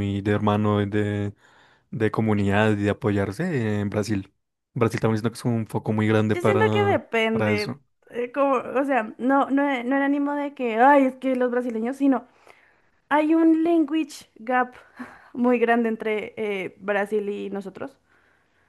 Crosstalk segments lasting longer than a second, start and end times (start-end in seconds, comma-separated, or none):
6.3-7.8